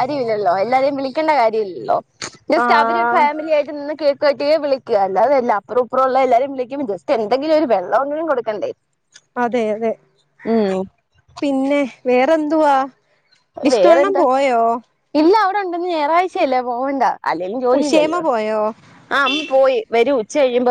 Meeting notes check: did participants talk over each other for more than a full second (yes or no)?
no